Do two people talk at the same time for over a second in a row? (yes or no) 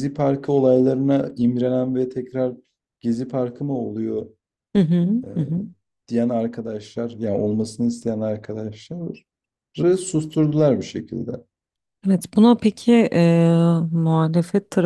no